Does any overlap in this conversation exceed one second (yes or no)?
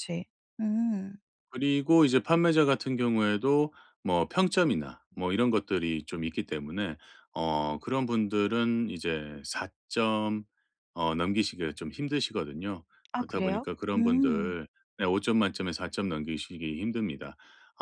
yes